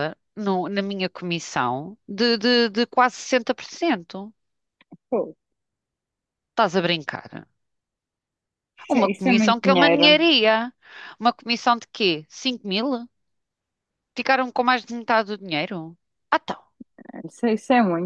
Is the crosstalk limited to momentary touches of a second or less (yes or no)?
no